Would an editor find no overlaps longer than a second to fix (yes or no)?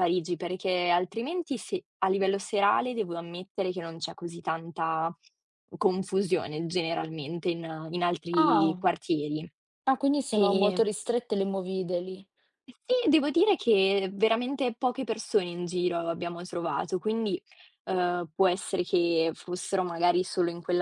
yes